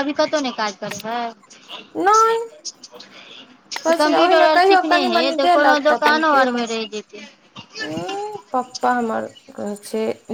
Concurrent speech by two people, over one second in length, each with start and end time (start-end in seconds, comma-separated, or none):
3.9-6.7